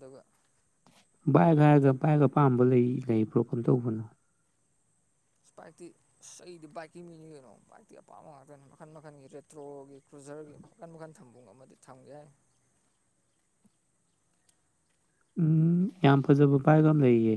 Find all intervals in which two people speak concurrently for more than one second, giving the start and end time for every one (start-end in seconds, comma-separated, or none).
none